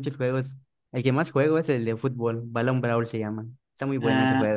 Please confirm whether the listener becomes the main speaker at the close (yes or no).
yes